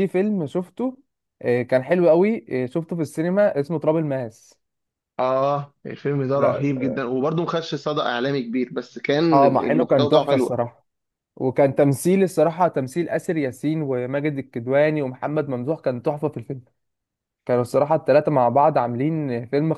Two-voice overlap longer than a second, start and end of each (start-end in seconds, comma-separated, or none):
9.3-10.6